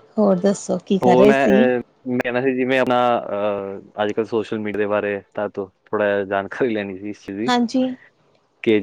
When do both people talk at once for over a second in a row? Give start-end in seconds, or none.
none